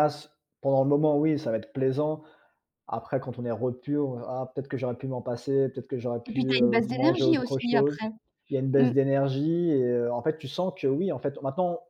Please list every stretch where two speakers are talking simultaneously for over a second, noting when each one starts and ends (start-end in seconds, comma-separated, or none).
6.3-8.0